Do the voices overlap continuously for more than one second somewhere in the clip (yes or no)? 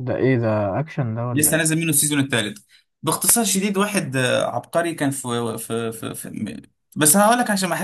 no